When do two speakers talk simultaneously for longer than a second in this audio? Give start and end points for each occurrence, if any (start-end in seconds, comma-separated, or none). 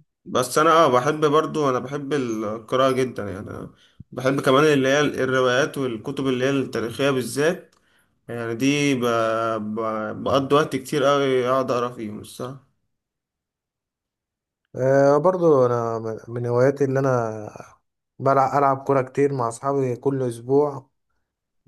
none